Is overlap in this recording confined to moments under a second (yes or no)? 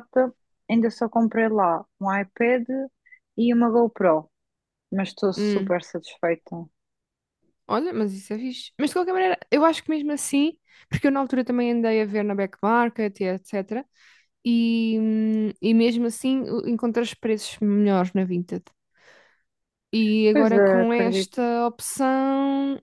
no